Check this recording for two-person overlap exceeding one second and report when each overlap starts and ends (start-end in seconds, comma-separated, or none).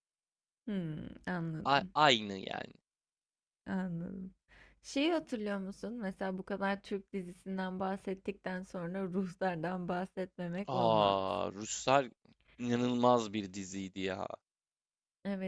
none